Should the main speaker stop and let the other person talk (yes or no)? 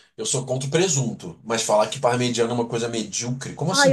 yes